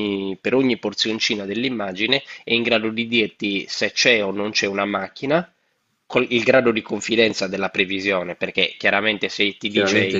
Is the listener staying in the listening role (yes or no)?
no